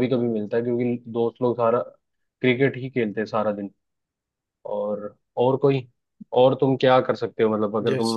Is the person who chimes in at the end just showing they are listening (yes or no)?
no